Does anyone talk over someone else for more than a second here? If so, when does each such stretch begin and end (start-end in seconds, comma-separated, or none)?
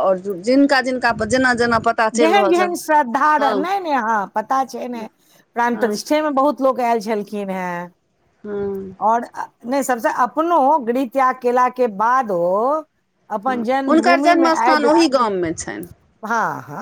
13.5-14.9